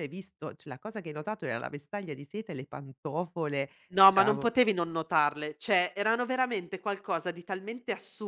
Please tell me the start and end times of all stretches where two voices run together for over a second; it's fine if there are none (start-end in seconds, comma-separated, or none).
none